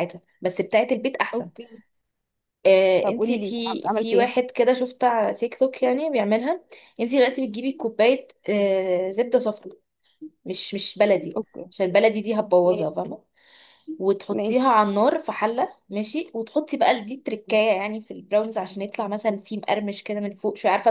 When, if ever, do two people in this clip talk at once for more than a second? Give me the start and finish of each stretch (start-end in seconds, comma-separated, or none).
3.0-4.4